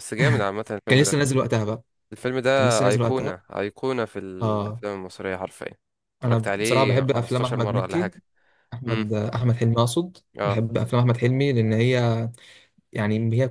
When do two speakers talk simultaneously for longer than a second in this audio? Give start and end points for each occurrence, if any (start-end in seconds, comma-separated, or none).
6.2-8.1